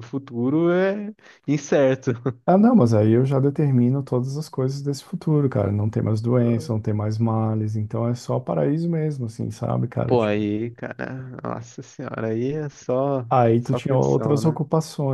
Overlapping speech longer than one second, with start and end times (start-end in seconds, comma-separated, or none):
13.3-14.6